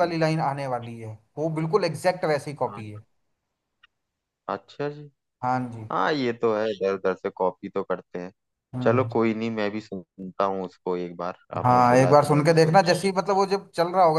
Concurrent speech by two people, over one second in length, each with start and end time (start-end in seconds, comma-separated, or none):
11.6-13.1